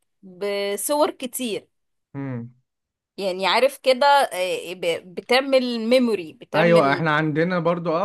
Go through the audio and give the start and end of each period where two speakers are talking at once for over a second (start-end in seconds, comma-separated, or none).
none